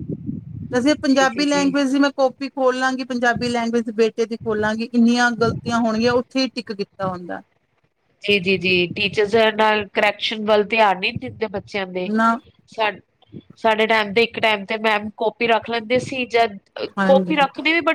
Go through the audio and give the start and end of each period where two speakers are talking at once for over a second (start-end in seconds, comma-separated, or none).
none